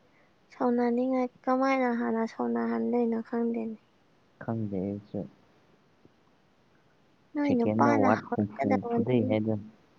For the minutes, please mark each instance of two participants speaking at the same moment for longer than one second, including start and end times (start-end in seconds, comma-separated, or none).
7.5-9.4